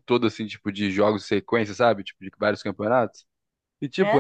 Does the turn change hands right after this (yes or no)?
no